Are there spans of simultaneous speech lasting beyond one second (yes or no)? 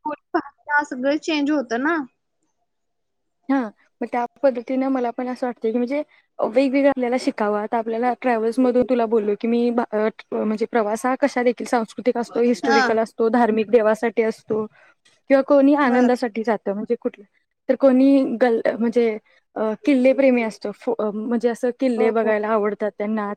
no